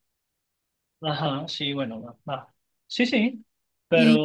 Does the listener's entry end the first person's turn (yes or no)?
yes